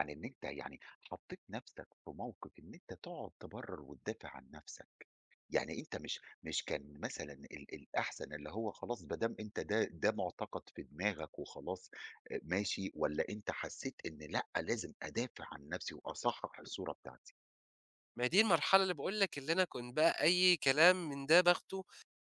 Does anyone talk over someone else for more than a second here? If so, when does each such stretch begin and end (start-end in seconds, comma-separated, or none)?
none